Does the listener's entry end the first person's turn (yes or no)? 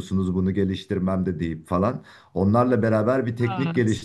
no